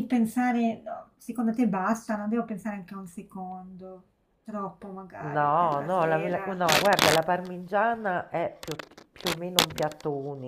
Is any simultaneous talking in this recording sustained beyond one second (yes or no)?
yes